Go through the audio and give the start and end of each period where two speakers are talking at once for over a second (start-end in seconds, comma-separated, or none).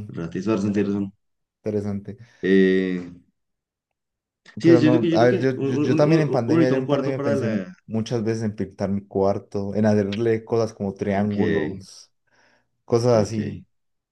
4.6-7.7